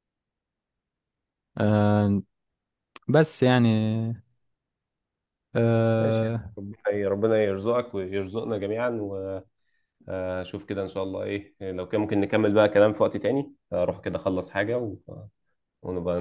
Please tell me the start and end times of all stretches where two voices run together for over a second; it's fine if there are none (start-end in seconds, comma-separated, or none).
none